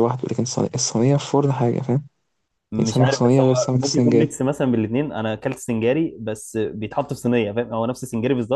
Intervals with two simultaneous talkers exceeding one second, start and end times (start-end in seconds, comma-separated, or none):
2.8-4.3